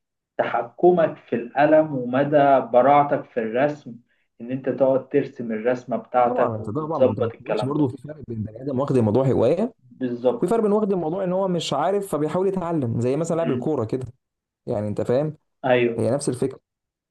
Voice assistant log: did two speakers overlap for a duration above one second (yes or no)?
yes